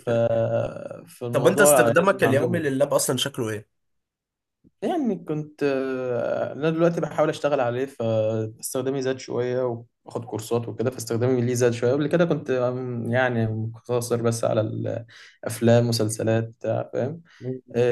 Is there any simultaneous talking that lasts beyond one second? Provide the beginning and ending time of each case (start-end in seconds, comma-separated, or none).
1.3-2.6